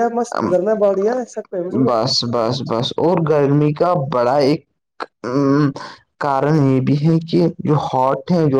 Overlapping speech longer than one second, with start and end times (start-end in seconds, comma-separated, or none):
none